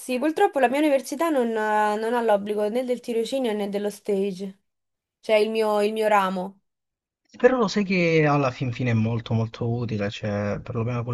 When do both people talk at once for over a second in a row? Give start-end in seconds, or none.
none